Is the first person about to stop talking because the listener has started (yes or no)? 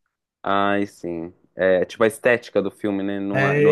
yes